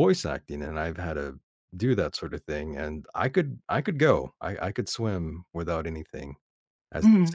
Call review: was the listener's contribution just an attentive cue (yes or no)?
no